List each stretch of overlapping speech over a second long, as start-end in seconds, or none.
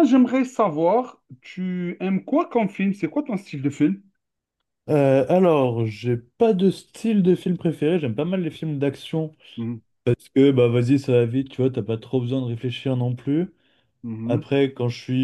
none